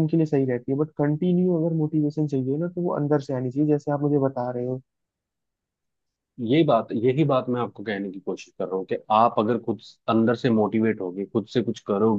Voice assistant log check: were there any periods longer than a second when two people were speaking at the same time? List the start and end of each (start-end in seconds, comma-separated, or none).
none